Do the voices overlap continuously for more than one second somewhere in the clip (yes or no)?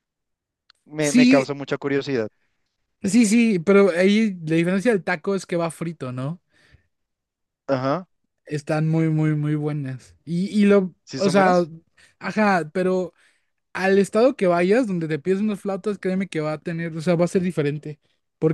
no